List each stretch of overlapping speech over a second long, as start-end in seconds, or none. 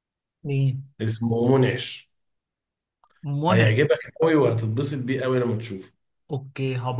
none